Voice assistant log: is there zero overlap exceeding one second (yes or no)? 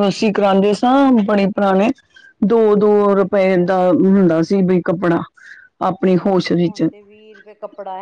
yes